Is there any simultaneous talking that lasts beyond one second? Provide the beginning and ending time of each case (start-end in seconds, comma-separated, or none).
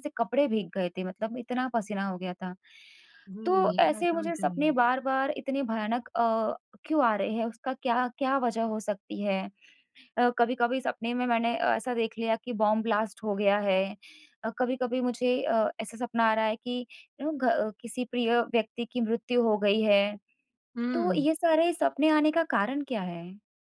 3.5-4.8